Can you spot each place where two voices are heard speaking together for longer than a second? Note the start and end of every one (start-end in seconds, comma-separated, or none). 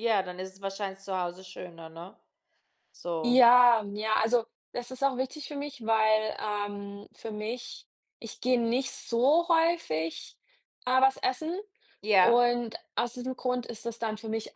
none